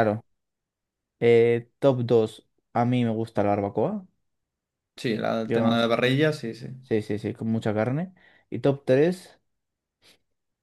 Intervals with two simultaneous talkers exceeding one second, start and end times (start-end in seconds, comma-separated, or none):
none